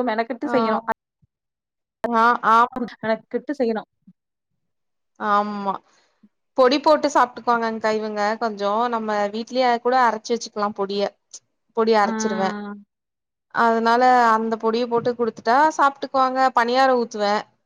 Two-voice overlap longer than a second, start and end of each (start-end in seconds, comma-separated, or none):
none